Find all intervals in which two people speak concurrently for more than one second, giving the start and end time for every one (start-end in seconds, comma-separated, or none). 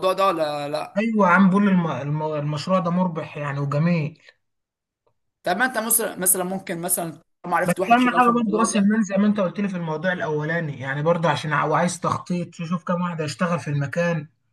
7.6-8.9